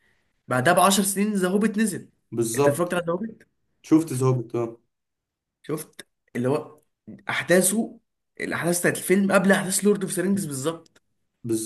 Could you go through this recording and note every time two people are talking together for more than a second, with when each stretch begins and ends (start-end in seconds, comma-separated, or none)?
none